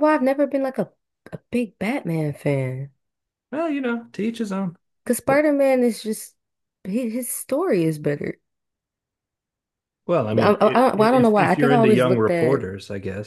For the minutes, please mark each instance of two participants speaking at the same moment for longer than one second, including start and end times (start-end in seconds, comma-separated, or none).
10.4-12.6